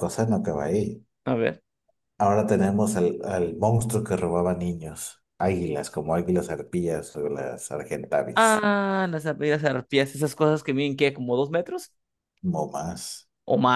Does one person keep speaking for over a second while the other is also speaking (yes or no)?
no